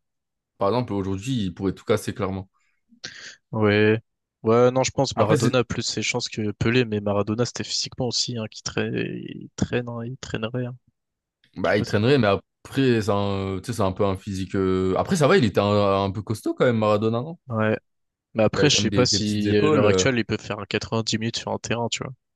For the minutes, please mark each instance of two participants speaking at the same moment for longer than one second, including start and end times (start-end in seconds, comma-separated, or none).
18.6-20.1